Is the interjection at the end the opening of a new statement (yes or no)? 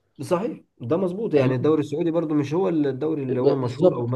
yes